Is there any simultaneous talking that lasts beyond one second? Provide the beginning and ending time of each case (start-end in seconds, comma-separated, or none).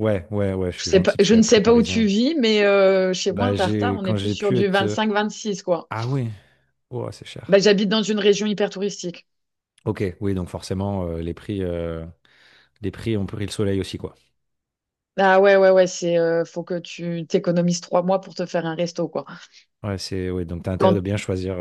0.8-2.1, 3.3-5.0